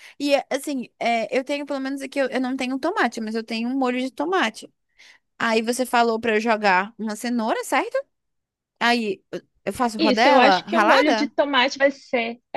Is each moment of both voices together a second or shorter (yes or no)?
no